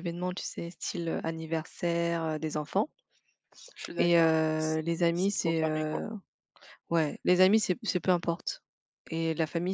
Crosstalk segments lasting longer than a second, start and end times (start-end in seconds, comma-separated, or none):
4.0-6.0